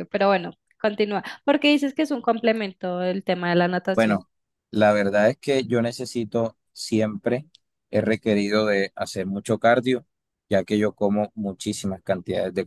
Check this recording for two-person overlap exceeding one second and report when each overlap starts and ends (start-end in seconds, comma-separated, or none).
none